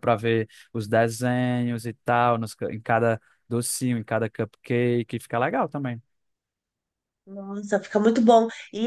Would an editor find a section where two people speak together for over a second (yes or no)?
no